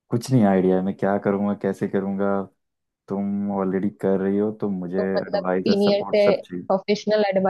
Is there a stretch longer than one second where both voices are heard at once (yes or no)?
yes